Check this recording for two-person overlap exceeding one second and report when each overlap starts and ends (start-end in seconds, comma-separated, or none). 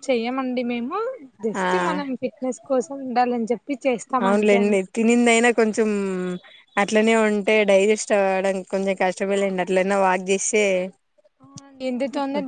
none